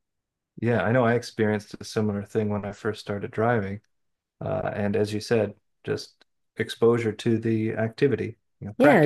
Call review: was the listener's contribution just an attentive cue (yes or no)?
no